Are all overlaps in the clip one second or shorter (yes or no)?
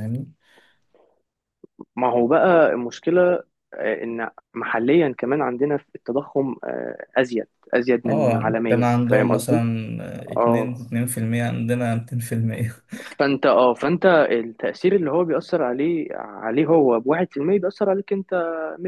no